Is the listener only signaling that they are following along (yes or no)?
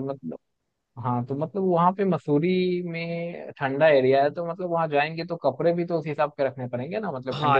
no